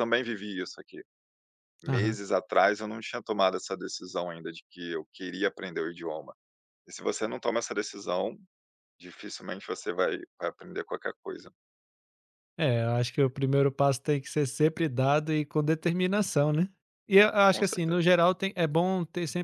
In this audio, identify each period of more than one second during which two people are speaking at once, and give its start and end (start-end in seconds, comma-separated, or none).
none